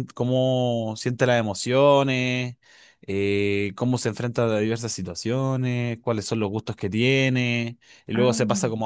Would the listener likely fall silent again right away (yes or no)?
yes